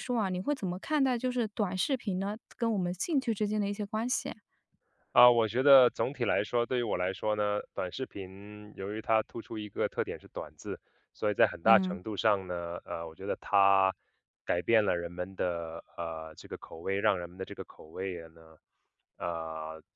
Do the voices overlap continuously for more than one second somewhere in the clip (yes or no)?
no